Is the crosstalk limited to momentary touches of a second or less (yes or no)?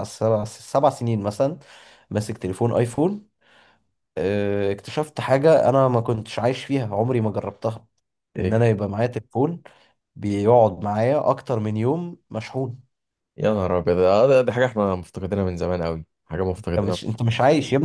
yes